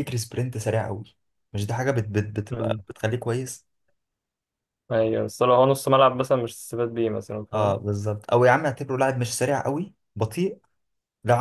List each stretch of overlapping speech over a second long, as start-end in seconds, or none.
none